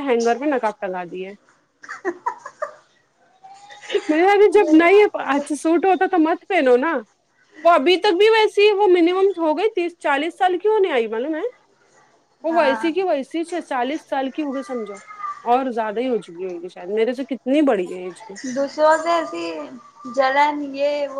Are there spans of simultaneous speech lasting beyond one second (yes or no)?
no